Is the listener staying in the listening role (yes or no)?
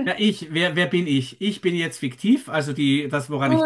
no